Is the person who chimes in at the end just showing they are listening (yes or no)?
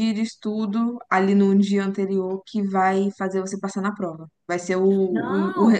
yes